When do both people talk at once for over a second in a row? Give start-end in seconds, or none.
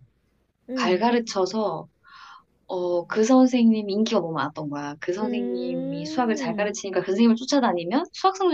5.2-6.8